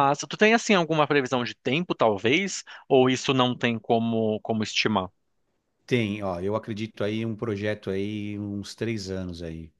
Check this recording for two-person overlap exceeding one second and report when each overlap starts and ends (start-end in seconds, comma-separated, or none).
none